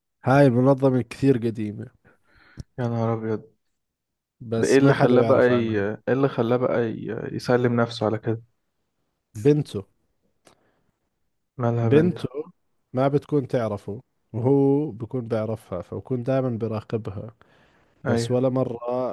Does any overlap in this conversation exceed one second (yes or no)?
yes